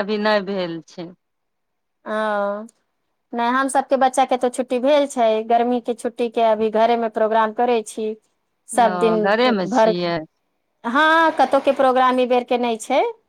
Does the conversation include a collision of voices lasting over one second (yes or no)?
no